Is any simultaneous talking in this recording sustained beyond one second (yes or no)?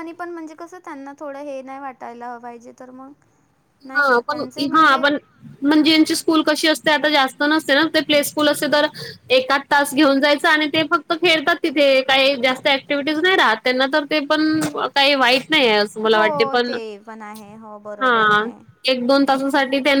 no